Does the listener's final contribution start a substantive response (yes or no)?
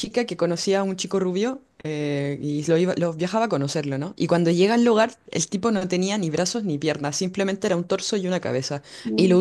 no